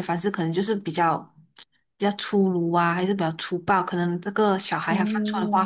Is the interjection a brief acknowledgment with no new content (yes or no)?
yes